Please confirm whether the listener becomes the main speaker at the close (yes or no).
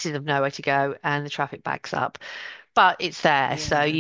no